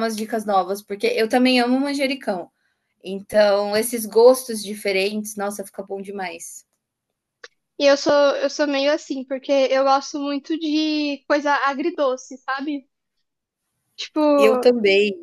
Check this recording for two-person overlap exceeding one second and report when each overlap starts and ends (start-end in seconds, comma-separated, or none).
none